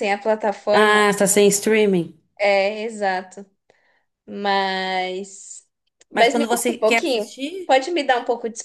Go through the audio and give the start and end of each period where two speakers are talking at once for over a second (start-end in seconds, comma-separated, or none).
6.1-7.7